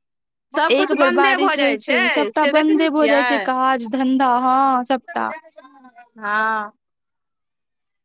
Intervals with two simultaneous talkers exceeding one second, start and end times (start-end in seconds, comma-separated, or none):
0.8-3.5